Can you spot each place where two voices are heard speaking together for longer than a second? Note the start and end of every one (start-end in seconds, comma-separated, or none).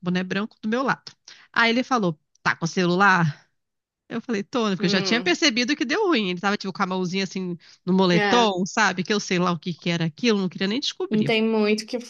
none